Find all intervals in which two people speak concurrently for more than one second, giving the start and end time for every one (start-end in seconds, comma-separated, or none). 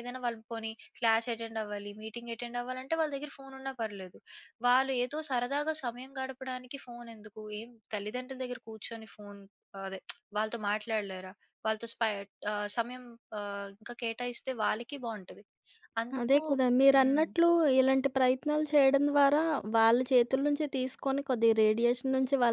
none